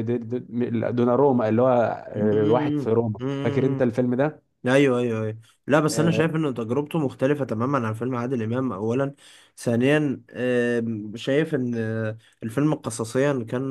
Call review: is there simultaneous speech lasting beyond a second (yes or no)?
yes